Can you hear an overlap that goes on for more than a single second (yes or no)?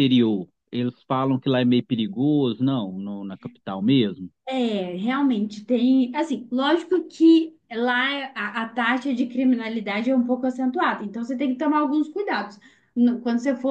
no